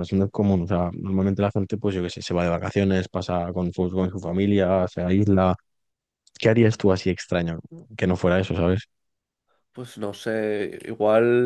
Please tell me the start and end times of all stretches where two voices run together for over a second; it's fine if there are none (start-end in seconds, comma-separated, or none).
none